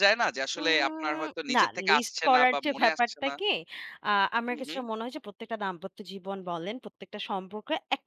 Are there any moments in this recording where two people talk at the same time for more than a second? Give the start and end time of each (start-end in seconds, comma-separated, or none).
0.6-3.3